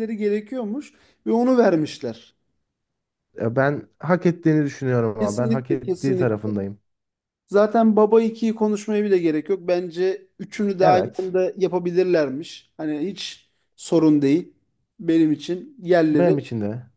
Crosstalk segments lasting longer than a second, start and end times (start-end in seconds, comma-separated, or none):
5.2-6.5